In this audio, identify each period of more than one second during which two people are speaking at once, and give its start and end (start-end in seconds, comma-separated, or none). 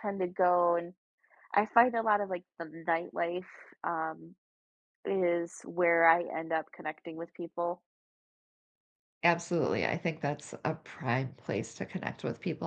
none